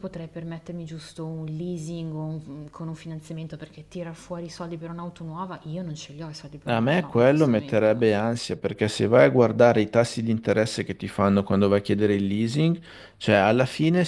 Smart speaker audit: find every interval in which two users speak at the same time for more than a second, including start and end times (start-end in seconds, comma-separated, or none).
6.7-8.0